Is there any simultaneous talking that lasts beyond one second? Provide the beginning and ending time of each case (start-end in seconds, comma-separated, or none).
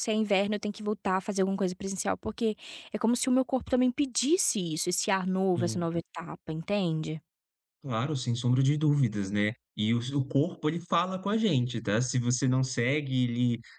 none